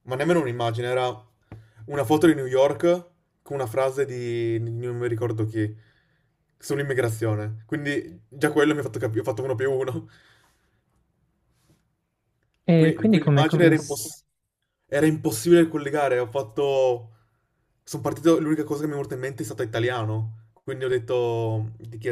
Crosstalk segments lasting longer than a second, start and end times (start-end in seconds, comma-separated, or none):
12.7-14.2